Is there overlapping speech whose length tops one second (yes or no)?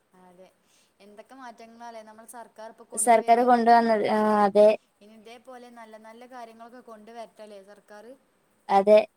no